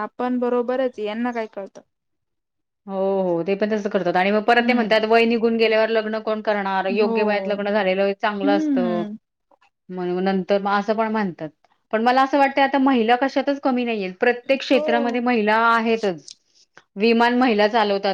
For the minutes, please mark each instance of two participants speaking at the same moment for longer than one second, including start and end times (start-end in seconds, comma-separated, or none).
none